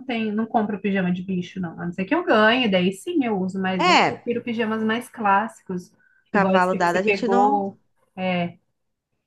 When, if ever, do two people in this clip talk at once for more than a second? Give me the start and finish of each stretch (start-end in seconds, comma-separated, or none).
6.3-7.7